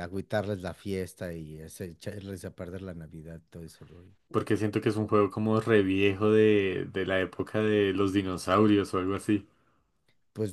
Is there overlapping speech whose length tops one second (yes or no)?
no